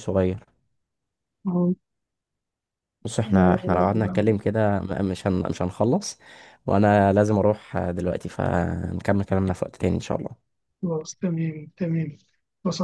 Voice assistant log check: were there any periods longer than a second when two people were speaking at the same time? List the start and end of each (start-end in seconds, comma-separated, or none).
3.2-4.5